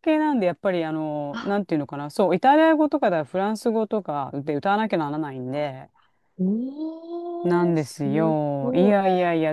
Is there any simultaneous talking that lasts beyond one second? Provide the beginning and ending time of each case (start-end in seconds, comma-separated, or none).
7.4-9.0